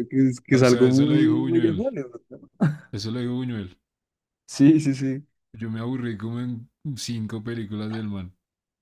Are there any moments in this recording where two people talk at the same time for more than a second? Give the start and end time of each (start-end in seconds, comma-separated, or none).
0.5-1.9